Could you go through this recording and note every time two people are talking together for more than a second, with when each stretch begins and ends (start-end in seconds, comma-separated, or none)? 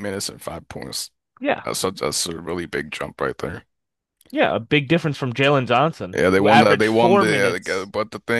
6.1-7.9